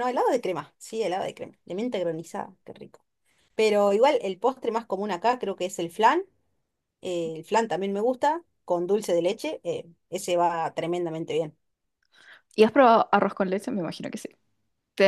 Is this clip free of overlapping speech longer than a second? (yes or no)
yes